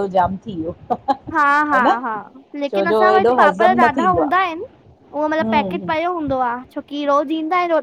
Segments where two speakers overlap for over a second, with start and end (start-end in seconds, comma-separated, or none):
2.7-4.3